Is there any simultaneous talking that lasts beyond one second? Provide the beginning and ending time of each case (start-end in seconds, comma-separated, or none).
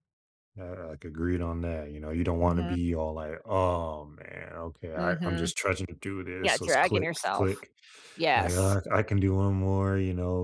6.4-7.6